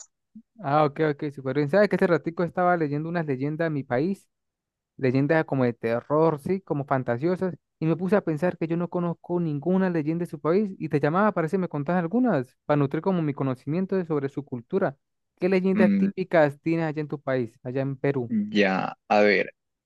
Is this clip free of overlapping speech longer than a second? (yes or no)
yes